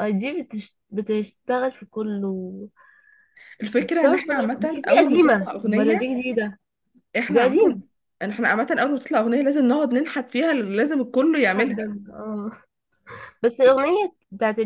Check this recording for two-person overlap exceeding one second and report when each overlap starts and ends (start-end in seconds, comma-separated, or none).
3.8-6.1